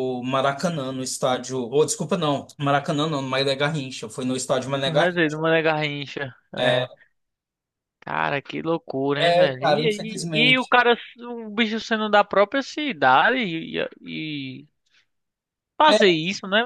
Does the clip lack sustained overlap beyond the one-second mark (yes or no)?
no